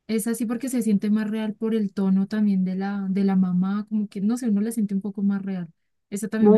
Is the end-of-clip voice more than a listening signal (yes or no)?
yes